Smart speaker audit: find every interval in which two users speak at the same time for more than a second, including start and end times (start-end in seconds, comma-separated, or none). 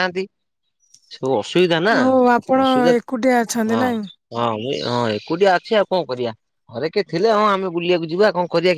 none